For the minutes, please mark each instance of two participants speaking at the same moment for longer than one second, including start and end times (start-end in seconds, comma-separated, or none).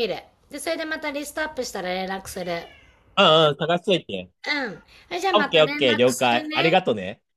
5.3-6.7